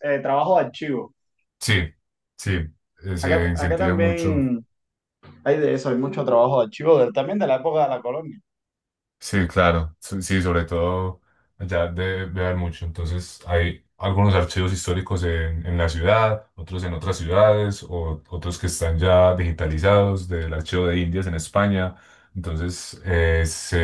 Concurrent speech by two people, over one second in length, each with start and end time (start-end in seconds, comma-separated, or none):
3.2-4.5